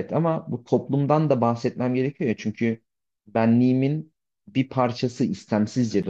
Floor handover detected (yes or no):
yes